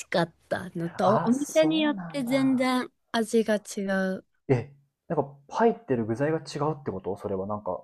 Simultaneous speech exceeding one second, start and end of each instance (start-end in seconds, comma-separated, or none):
1.0-2.8